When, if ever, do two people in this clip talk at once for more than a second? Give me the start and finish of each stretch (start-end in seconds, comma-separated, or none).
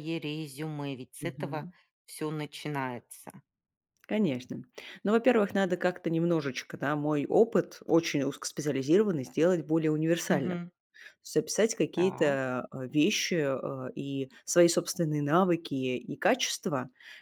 none